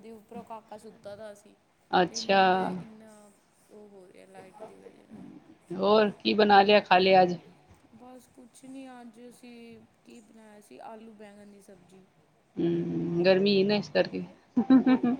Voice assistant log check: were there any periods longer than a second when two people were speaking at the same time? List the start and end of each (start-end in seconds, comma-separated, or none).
none